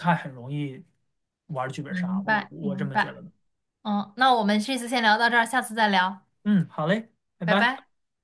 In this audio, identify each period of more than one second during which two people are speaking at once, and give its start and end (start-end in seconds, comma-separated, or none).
1.9-3.1